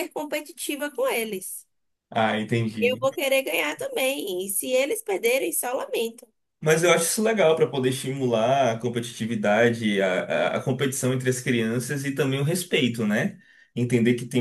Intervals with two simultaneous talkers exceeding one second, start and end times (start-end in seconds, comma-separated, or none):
none